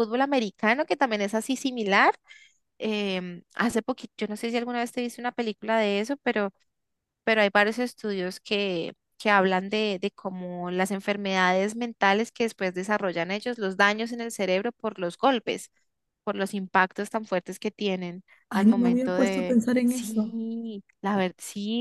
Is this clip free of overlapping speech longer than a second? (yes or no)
no